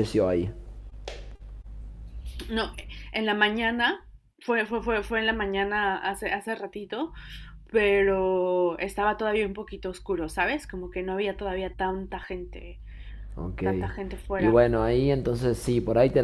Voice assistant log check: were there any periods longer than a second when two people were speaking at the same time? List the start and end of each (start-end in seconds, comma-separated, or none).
none